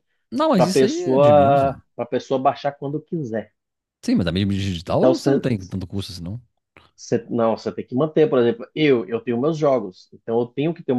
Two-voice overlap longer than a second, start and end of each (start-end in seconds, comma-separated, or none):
0.6-1.8